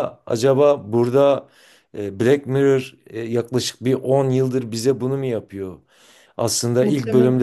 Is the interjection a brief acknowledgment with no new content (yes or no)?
yes